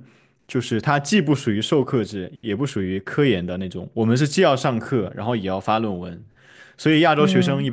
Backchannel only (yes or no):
yes